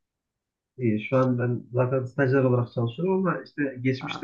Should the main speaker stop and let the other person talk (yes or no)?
no